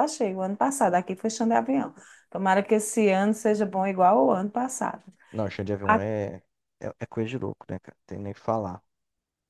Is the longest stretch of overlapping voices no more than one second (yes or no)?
yes